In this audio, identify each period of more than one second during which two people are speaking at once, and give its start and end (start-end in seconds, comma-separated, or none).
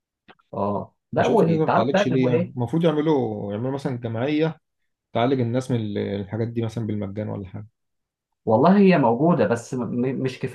1.2-2.5